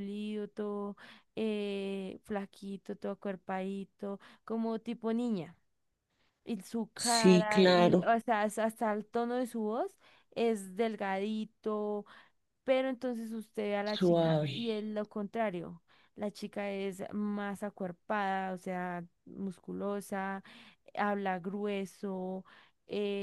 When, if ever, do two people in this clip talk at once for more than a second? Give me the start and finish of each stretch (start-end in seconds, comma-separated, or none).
7.0-8.2